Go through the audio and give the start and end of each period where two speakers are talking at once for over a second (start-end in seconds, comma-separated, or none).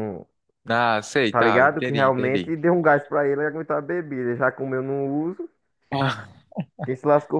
1.3-2.5